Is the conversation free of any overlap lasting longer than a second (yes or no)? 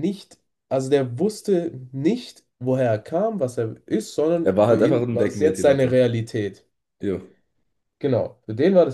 no